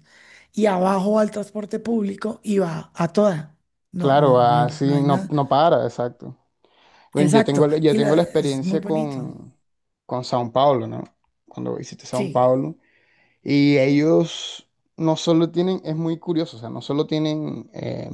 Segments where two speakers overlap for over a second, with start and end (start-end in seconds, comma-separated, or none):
4.0-5.3, 7.2-9.3